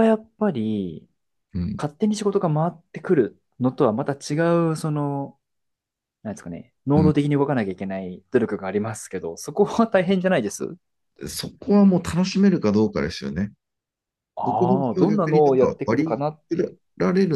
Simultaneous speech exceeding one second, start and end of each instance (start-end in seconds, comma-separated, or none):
14.4-16.8